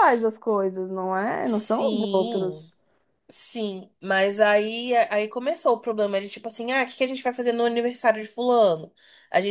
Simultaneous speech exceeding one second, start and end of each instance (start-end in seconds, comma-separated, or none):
1.4-2.7